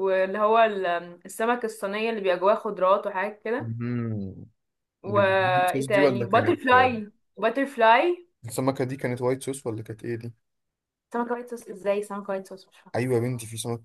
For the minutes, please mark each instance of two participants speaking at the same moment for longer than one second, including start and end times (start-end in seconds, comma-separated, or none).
5.0-6.9